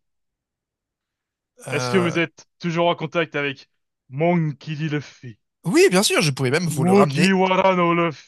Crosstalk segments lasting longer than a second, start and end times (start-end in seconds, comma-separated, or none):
none